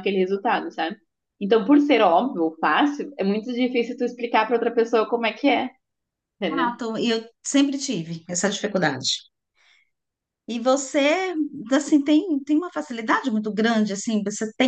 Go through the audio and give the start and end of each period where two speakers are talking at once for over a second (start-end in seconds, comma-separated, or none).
none